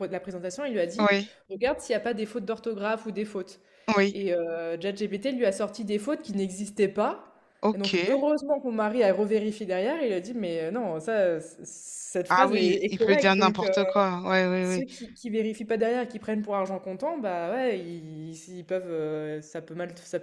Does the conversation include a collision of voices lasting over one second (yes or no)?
yes